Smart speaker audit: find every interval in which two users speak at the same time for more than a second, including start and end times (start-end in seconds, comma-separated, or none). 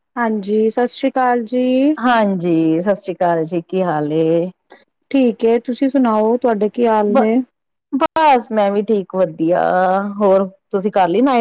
none